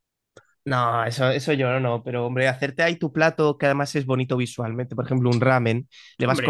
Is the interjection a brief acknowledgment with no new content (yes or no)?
yes